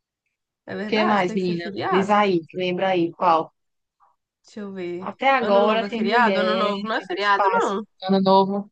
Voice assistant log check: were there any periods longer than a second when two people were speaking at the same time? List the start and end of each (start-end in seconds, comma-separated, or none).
0.8-2.2, 5.0-7.8